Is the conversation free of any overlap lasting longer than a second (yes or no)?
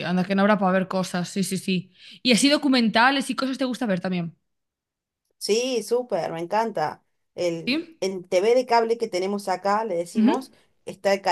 yes